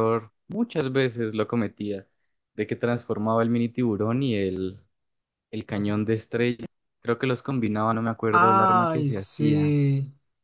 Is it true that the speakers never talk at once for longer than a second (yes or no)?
no